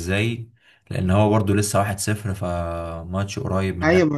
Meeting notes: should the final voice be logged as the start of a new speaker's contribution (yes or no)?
yes